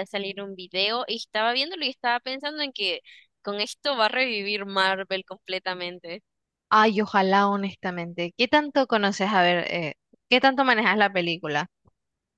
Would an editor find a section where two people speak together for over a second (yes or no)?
no